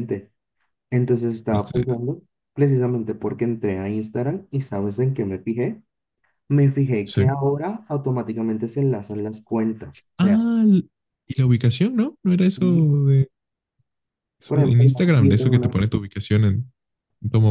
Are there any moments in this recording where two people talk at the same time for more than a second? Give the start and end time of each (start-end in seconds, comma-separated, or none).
14.4-15.8